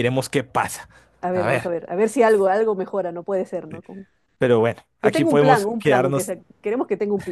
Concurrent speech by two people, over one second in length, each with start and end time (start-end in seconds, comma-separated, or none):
5.0-6.3